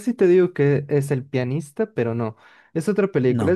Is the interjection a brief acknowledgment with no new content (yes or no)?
yes